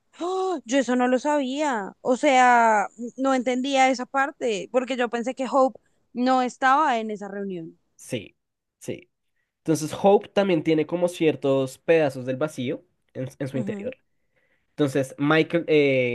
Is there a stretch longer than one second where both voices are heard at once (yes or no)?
no